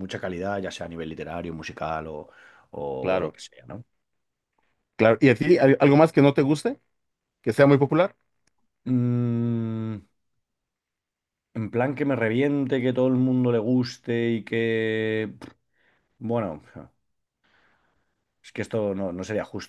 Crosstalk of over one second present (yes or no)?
no